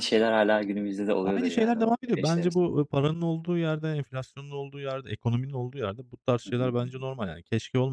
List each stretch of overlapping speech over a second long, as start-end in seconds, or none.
1.2-2.8